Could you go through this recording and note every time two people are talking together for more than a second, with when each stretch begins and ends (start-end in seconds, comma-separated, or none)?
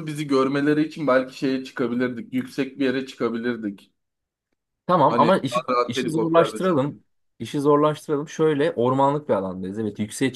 5.1-6.8